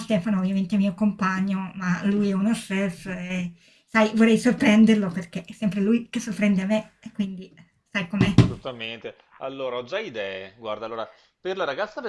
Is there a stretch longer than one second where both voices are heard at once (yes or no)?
no